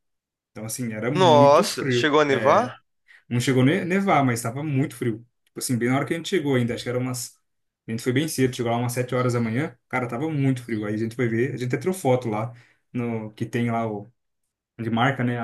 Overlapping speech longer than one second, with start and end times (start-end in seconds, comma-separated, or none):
1.1-2.7